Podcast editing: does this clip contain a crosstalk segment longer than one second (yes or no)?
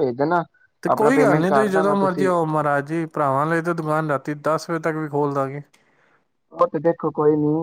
yes